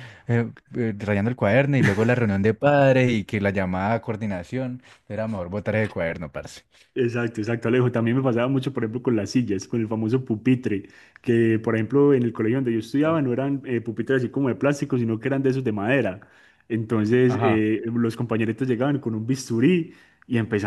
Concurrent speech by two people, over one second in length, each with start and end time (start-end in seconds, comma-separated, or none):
none